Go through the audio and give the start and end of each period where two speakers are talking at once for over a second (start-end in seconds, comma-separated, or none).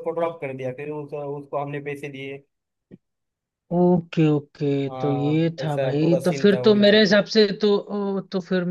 4.9-7.2